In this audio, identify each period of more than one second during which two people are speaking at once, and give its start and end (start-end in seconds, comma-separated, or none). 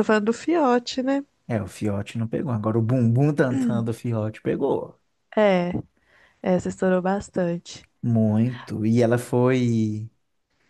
none